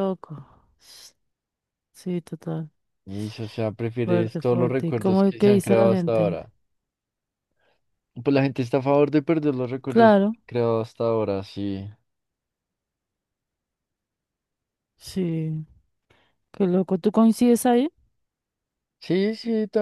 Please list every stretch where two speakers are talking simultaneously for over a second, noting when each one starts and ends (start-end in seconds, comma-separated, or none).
4.0-6.4